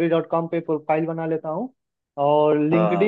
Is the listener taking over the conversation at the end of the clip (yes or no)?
no